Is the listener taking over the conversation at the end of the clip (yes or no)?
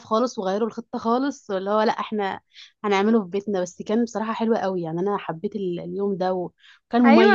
yes